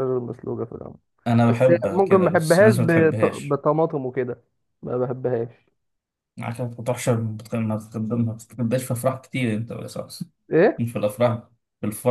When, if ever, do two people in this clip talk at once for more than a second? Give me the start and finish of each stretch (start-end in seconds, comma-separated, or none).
1.5-3.6